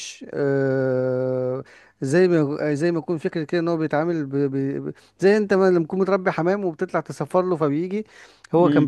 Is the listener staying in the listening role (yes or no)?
yes